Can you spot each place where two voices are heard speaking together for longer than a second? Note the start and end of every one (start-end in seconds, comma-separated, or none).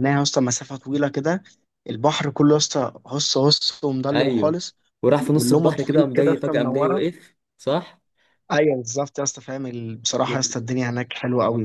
5.3-7.0